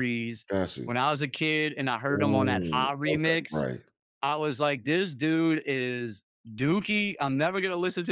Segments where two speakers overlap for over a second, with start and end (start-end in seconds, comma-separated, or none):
2.1-3.6